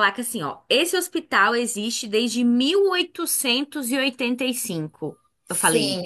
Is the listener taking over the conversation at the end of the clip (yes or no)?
yes